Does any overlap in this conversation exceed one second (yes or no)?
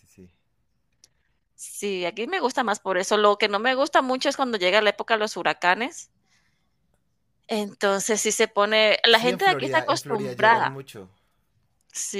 yes